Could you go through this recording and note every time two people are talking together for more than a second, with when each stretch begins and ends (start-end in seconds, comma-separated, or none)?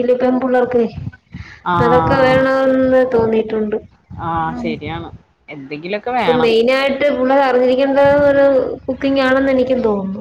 none